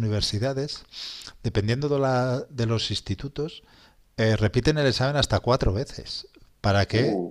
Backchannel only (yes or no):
yes